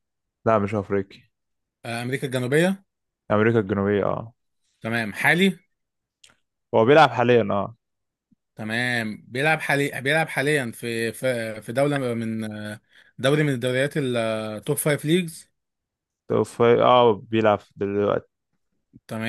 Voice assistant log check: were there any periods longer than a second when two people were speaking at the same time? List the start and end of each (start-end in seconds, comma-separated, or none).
none